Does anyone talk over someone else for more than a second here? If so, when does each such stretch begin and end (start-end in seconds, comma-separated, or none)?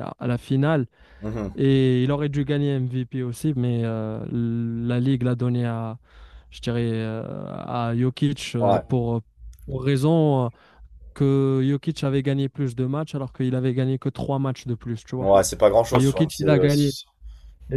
none